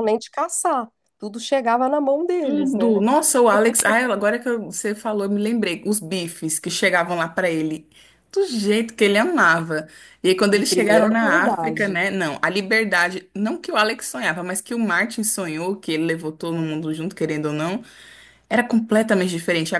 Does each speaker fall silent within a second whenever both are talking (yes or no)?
no